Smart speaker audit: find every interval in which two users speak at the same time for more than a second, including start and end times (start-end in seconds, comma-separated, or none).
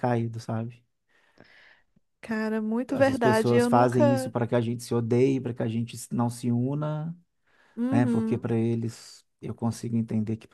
2.9-4.3